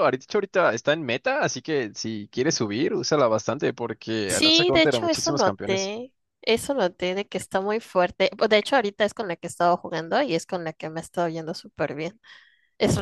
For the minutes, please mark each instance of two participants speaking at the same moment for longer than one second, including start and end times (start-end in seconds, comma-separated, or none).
4.3-5.9